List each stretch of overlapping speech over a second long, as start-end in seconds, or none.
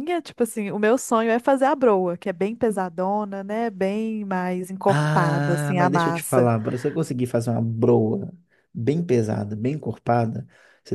4.9-6.5